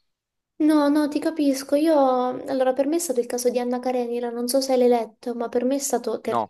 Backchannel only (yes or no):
yes